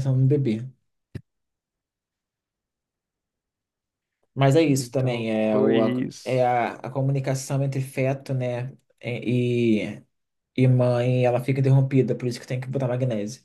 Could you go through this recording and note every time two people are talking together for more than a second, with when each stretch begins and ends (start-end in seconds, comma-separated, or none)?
4.7-6.5